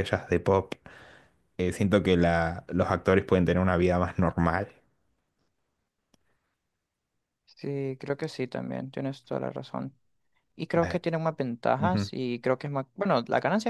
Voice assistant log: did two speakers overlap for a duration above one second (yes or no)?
no